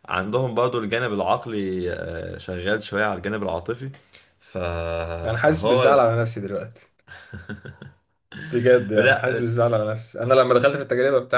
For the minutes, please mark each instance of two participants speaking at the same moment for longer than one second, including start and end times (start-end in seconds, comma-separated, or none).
none